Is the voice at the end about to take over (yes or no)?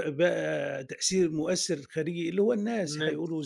no